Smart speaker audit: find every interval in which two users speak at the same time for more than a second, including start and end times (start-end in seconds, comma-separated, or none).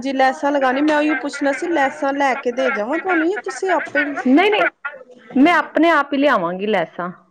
none